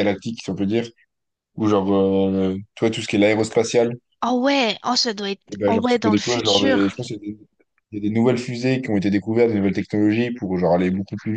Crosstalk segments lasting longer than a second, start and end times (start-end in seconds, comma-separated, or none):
5.5-6.9